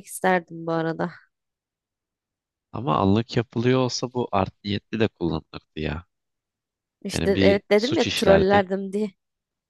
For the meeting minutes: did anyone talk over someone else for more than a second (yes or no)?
yes